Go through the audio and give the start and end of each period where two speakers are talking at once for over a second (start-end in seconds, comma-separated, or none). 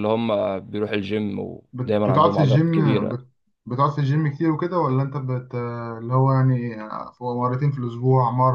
1.7-3.2